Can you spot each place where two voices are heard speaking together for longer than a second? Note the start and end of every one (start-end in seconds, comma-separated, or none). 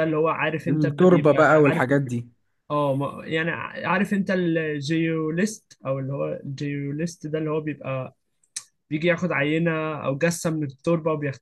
0.7-2.0